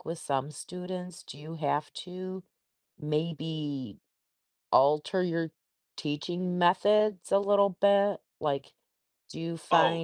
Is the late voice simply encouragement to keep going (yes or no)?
no